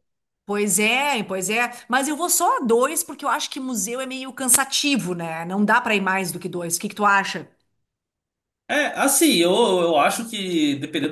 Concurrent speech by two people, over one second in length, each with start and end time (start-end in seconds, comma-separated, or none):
none